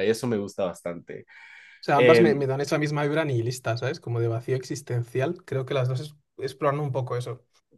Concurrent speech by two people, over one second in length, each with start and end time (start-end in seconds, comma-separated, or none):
none